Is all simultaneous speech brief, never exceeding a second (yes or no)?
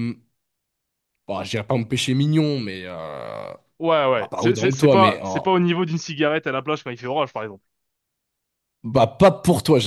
no